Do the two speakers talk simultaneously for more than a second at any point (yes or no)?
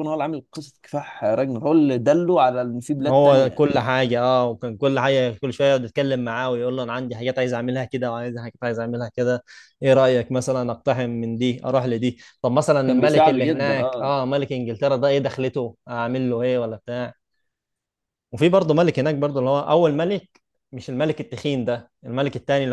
yes